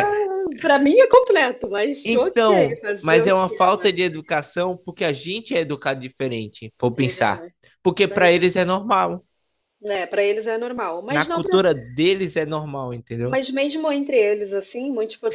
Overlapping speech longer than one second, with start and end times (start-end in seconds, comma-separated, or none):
2.0-3.9